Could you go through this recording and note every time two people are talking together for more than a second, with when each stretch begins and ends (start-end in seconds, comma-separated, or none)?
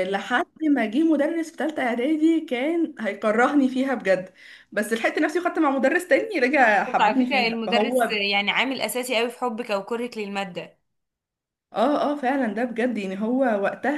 6.6-8.2